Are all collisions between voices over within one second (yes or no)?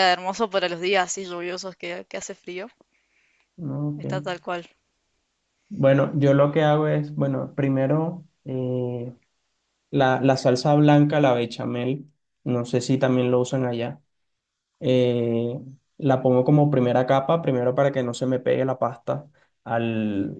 yes